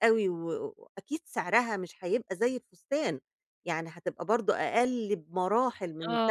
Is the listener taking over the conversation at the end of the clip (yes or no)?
yes